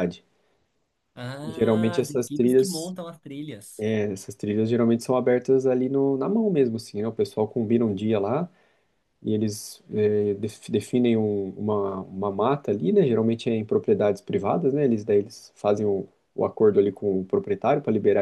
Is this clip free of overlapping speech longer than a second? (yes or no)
no